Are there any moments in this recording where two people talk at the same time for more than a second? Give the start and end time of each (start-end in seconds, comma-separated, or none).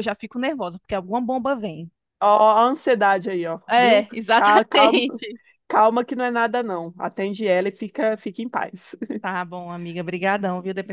3.7-5.0